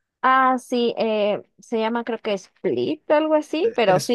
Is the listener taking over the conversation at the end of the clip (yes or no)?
yes